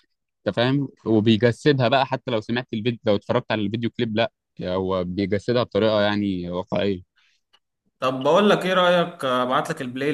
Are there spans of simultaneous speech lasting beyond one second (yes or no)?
no